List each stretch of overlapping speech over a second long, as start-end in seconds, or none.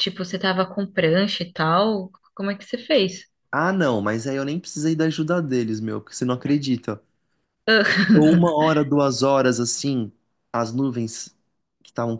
none